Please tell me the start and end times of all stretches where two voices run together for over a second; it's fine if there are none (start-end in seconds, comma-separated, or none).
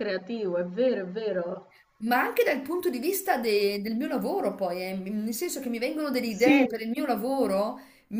none